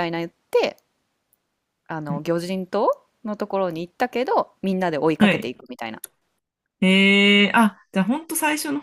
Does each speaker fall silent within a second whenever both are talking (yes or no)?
yes